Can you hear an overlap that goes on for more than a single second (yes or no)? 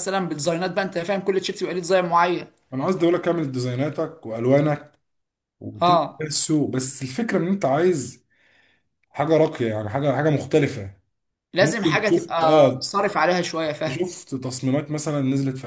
yes